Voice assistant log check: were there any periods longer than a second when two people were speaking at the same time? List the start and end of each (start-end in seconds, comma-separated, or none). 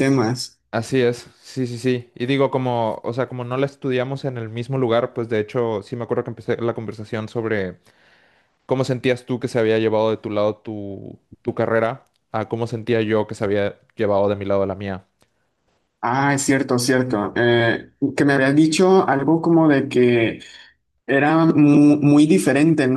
none